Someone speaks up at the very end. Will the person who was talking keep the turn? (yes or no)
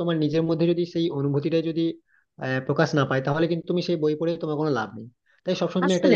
yes